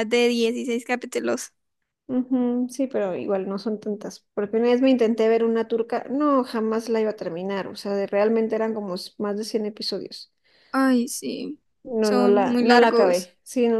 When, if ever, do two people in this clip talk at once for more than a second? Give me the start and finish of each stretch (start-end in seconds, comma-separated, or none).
12.0-13.3